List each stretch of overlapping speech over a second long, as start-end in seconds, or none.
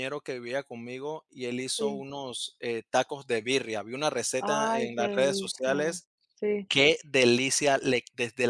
4.4-6.0